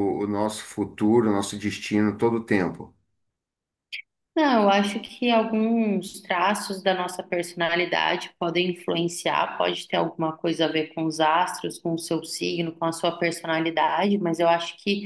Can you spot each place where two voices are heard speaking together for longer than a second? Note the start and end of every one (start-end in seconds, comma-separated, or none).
none